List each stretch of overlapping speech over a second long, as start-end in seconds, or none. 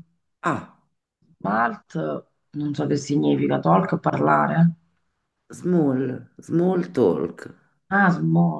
none